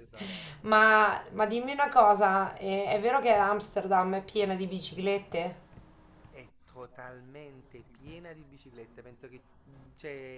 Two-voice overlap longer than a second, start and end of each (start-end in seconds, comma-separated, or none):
none